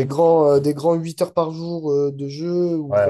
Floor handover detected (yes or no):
yes